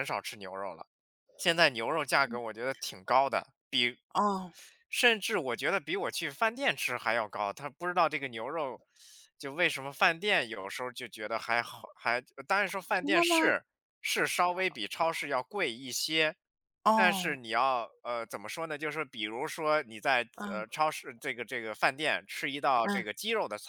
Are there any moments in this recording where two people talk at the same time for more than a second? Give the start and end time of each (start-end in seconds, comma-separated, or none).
none